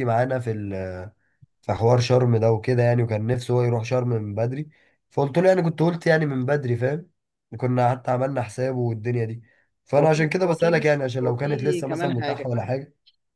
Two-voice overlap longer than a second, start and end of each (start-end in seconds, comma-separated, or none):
10.0-12.5